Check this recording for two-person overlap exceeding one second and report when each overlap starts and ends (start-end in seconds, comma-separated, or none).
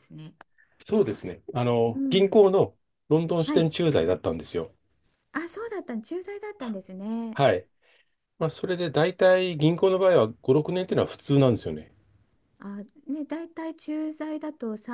none